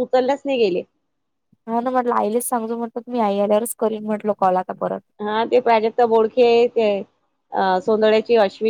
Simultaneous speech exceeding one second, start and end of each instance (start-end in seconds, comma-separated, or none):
none